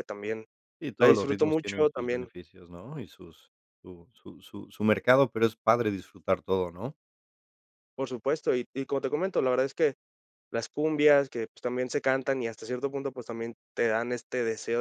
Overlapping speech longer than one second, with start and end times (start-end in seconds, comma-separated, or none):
1.0-2.3